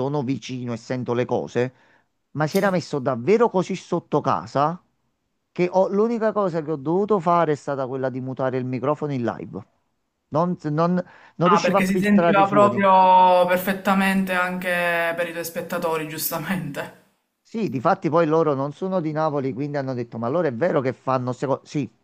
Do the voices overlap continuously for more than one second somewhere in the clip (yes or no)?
yes